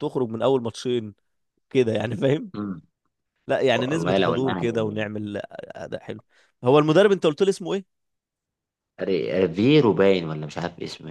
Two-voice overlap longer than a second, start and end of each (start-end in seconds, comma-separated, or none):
3.7-5.0